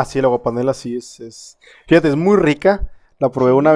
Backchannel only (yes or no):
yes